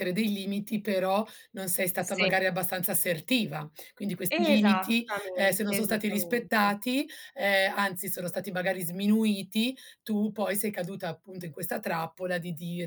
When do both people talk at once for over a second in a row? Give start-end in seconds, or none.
4.3-6.8